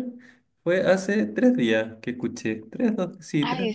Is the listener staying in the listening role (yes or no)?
no